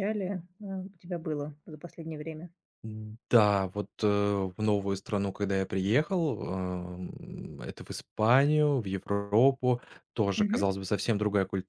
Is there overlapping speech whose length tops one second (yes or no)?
no